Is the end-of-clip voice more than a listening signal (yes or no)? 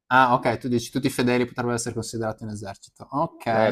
yes